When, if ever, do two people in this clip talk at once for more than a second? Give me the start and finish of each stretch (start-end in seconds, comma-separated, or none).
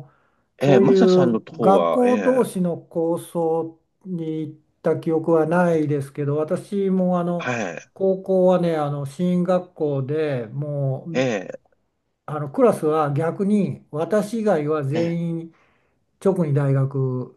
0.6-2.5